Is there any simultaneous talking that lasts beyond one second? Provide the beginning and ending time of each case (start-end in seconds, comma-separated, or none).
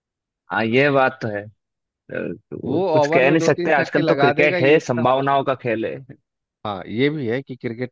2.6-5.4